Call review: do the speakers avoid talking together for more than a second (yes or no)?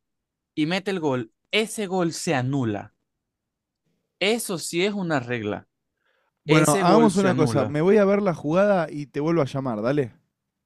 no